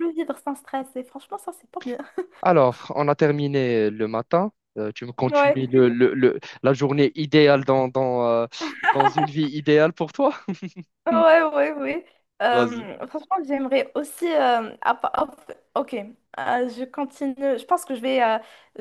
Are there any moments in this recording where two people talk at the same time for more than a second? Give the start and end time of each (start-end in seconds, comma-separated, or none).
none